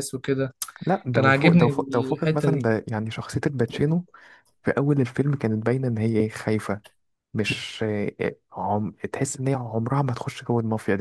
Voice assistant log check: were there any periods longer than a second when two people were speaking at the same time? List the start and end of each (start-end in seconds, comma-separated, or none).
1.1-2.7